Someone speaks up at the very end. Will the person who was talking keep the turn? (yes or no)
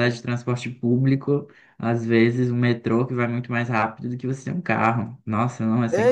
no